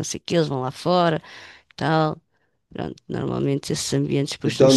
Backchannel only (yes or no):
no